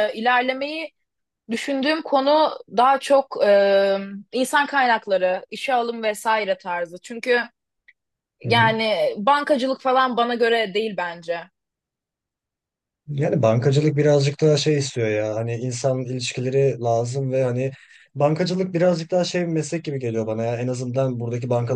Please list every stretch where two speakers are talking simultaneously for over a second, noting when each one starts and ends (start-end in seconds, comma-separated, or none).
none